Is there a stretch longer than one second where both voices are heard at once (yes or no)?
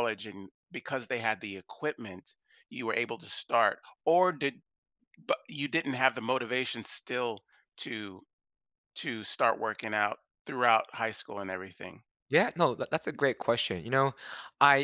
no